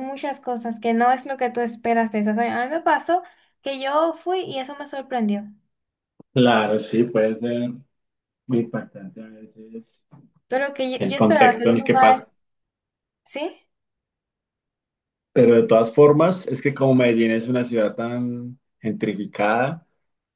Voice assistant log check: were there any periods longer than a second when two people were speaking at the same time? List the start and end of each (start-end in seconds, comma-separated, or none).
11.0-12.3